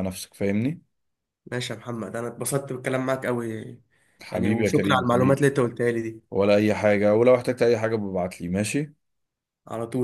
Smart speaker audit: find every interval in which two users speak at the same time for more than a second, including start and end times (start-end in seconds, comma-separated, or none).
4.3-5.5